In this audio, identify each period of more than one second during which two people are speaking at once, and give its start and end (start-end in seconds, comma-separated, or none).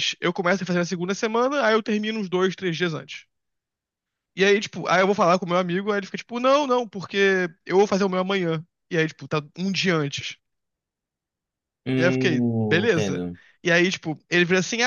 12.0-13.3